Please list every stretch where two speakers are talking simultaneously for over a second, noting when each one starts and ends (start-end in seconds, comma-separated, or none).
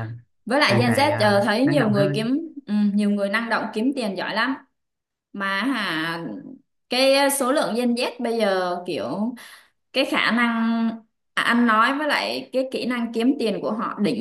0.7-2.3